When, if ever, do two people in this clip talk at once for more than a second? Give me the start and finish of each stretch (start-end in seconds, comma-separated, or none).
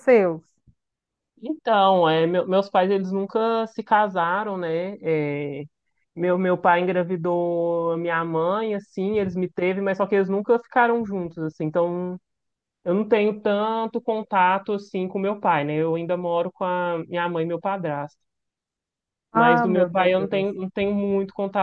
19.3-20.6